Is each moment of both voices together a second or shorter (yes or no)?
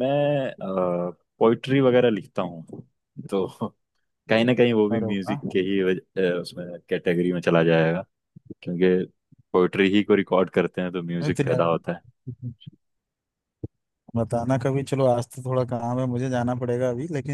yes